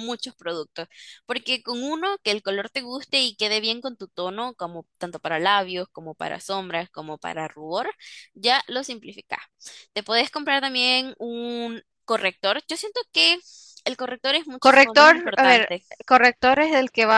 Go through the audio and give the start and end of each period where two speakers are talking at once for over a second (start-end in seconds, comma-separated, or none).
14.6-15.8